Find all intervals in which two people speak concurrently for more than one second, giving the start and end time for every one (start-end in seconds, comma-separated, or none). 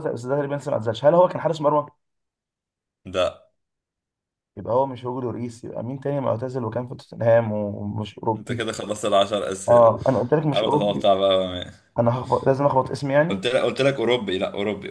none